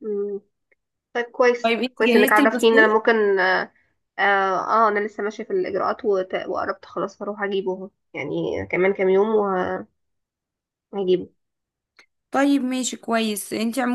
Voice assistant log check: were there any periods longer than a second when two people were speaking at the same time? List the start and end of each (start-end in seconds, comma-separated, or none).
1.6-3.0